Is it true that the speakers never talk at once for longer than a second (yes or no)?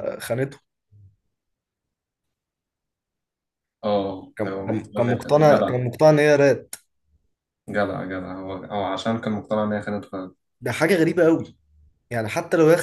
no